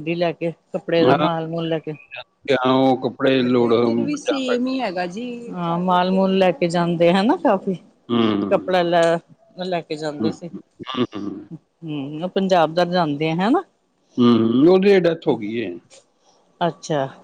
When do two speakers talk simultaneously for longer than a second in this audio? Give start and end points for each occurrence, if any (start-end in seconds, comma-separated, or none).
3.3-4.7